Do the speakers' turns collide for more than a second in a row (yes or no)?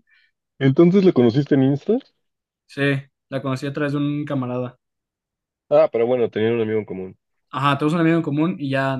no